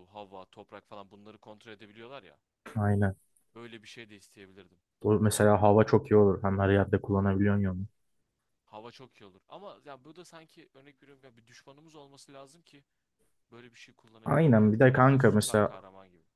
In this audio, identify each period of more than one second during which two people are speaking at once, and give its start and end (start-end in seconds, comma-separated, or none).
14.2-15.7